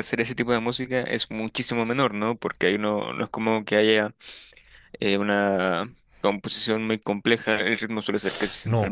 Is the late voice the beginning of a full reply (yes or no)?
yes